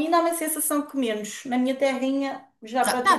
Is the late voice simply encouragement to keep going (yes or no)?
no